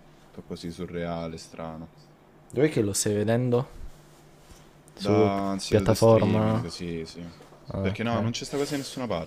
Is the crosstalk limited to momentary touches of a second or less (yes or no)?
no